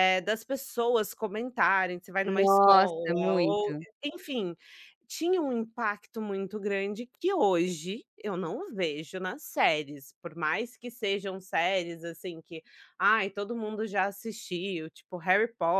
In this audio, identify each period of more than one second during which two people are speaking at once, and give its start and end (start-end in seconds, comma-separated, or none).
2.3-3.8